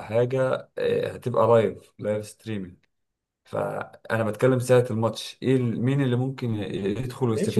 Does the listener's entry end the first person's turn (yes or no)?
yes